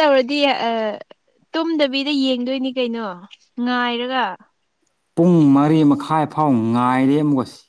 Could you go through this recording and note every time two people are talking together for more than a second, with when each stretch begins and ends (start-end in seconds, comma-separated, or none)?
none